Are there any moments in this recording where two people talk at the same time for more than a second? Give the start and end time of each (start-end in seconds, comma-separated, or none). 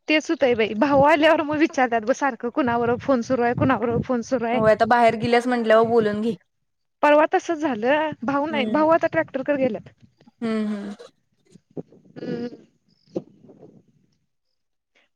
none